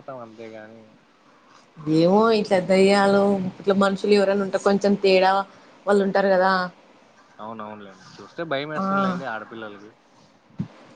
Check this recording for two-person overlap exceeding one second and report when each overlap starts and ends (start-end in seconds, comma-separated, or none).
none